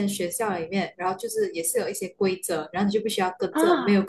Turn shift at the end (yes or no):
no